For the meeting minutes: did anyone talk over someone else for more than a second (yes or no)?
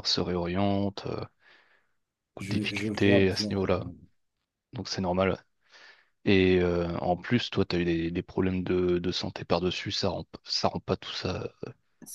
yes